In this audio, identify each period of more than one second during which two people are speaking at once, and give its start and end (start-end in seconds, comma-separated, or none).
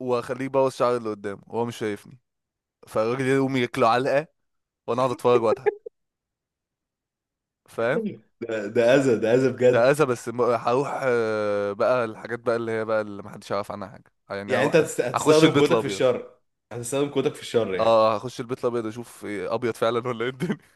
14.5-16.0